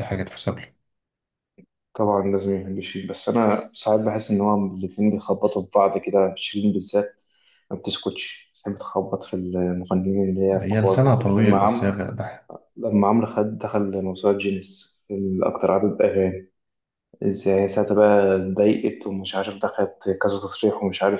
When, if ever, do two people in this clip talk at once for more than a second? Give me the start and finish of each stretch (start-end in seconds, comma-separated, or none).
10.6-12.0